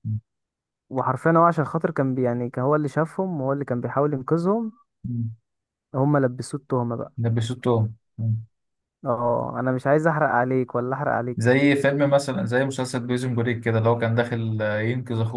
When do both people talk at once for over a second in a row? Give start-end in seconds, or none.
none